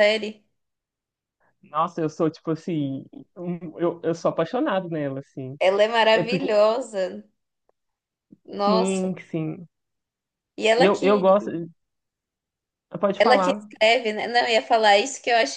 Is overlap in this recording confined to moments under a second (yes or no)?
yes